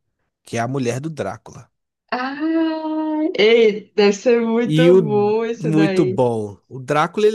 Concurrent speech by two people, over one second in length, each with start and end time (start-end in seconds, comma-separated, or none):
4.6-6.2